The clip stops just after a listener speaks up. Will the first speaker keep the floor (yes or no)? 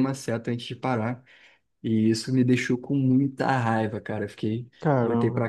yes